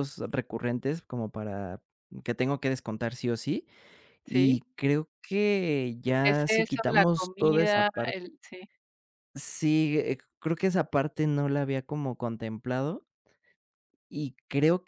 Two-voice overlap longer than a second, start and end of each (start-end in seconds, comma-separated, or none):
6.2-8.3